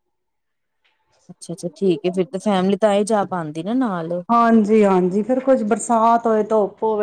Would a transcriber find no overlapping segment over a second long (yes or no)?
yes